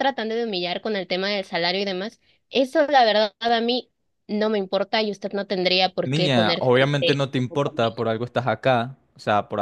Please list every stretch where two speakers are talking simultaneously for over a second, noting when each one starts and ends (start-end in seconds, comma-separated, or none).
6.0-8.0